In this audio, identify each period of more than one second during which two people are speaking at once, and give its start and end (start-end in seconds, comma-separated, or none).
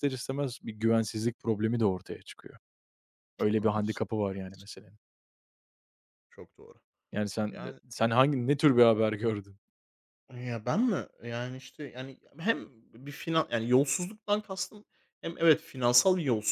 3.4-4.7